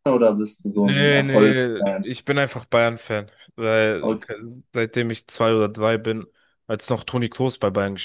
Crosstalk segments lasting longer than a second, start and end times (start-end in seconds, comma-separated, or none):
0.7-2.1